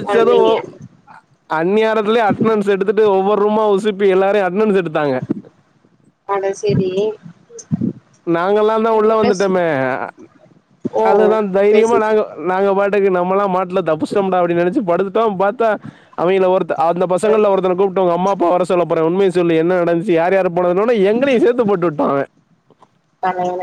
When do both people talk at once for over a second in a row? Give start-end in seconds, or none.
none